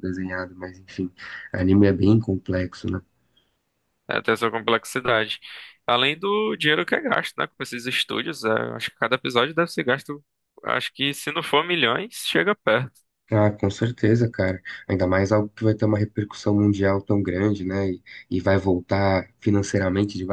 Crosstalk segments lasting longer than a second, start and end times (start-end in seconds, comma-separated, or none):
none